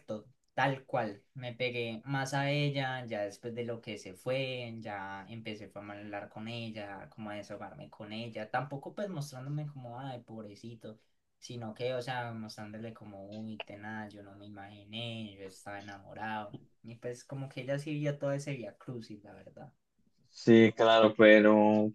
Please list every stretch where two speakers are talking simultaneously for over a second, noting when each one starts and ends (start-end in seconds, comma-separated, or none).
none